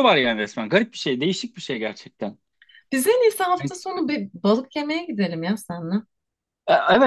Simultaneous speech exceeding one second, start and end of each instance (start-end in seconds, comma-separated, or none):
none